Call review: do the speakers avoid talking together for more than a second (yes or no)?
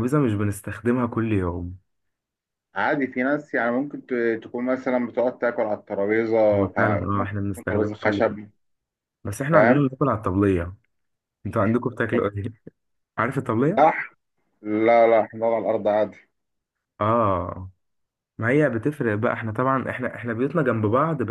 no